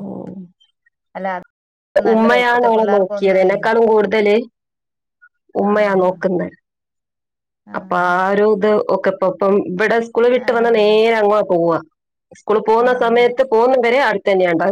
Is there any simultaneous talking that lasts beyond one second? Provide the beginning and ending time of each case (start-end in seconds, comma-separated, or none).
2.1-3.5